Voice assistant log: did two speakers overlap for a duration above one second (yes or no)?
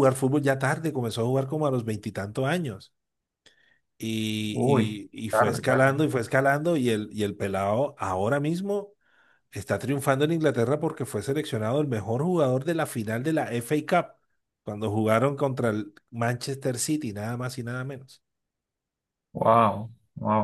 yes